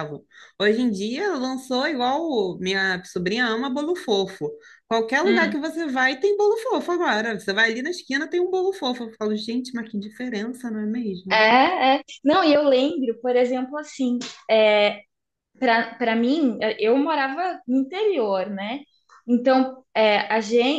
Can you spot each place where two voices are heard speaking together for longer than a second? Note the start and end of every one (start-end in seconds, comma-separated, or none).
none